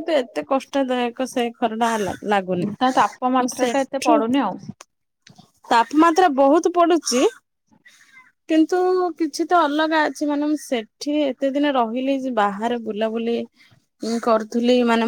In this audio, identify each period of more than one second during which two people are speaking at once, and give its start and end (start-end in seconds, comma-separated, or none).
2.8-4.2